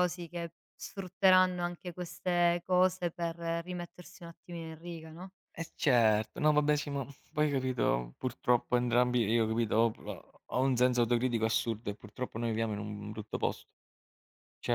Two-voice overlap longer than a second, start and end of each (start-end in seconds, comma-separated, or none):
none